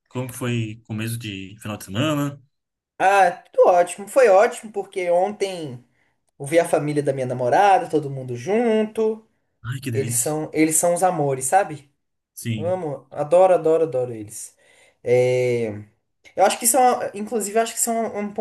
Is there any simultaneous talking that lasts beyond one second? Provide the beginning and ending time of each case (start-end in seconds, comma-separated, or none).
none